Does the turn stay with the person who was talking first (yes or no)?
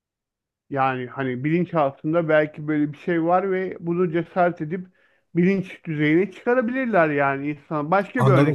no